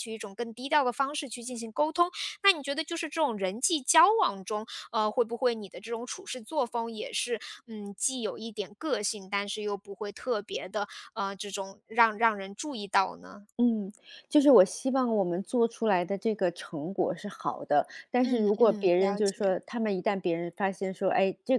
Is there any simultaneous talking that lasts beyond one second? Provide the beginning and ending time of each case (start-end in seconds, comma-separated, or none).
18.2-19.5